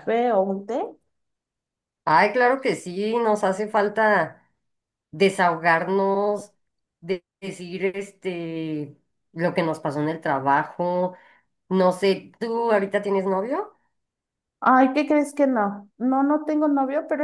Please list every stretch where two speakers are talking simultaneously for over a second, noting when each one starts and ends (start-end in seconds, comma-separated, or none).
none